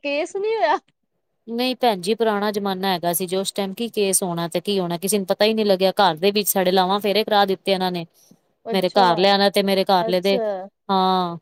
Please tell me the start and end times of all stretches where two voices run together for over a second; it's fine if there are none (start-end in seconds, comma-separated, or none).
none